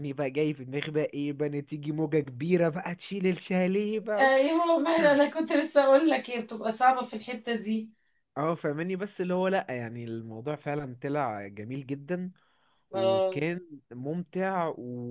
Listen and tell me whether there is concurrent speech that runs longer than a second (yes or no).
no